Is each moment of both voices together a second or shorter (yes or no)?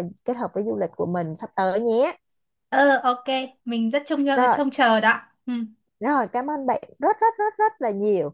yes